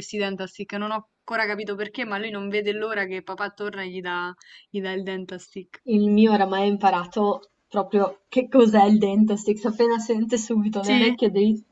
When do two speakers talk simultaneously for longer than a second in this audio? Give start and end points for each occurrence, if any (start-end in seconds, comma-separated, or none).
none